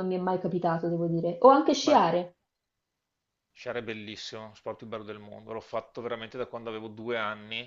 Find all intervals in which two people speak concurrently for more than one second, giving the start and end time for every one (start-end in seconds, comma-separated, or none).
none